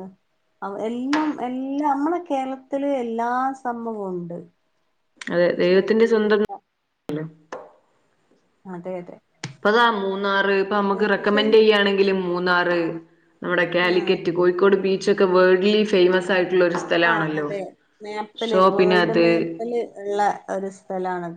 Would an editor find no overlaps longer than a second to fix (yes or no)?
yes